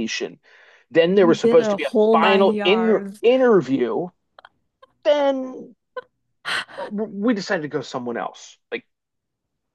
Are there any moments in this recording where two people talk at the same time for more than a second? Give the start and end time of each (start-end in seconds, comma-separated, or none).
1.1-3.2